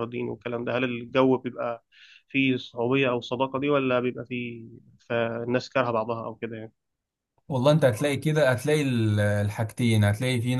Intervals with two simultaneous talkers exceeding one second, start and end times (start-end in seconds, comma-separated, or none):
none